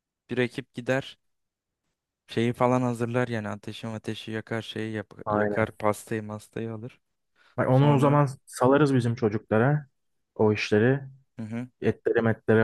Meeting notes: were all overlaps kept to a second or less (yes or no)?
yes